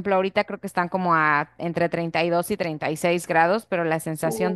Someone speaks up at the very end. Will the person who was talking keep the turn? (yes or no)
yes